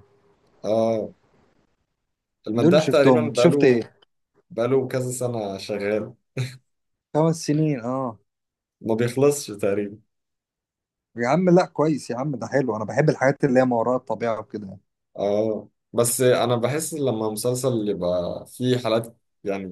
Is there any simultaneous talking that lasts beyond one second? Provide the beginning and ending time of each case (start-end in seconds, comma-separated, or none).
2.5-3.9